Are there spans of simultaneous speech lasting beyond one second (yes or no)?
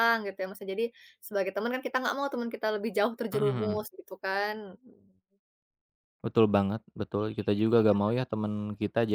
no